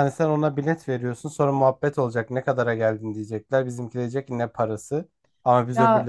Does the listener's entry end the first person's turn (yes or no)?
no